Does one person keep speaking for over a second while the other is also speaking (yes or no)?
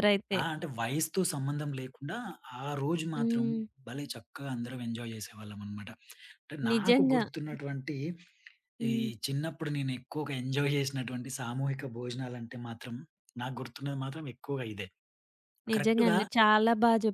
no